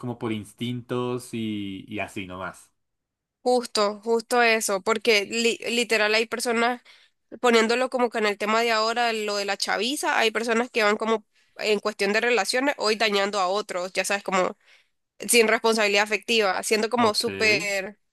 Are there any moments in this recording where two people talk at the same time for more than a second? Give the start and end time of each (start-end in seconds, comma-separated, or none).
none